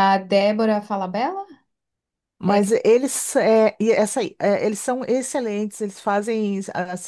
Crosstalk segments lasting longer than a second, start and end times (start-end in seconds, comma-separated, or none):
none